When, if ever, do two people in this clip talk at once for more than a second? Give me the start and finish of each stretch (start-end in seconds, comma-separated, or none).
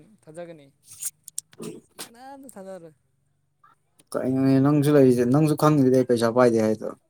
none